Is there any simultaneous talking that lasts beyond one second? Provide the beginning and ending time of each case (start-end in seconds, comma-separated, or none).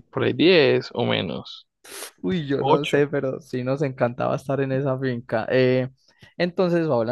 none